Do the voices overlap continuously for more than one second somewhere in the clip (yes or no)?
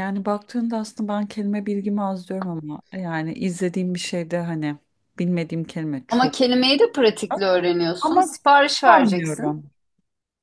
yes